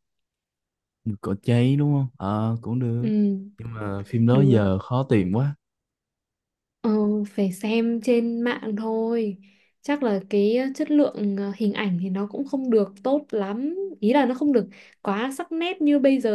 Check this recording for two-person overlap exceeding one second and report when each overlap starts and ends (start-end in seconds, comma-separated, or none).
none